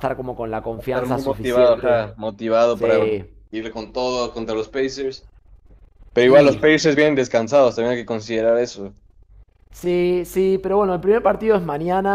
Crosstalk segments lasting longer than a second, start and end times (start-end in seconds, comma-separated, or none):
0.8-2.0